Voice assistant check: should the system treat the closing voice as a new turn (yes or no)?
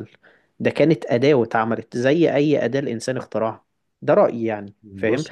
no